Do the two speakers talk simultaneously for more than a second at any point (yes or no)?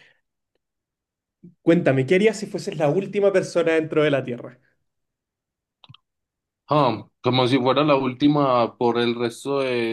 no